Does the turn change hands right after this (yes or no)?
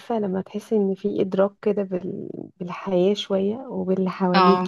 no